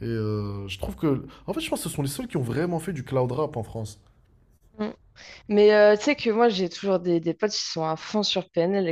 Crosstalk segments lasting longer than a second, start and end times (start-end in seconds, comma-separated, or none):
none